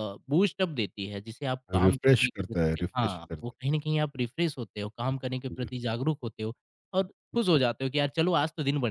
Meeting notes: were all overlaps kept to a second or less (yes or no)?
no